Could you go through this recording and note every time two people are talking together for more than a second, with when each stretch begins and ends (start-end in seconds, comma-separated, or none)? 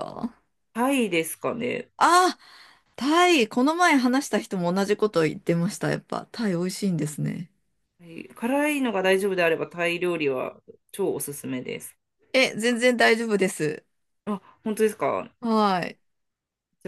none